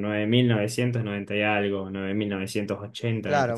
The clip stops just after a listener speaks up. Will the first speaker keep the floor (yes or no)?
no